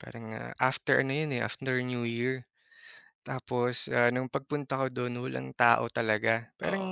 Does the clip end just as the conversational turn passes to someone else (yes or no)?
no